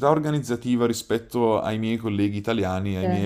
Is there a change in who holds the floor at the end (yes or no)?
no